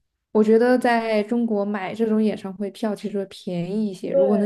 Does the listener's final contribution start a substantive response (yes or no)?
yes